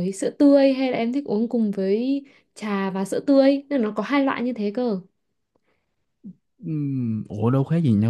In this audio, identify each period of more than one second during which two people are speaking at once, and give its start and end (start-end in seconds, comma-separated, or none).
none